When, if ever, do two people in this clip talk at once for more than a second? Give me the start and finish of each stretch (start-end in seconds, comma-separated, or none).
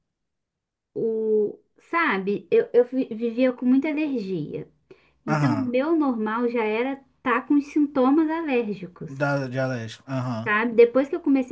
none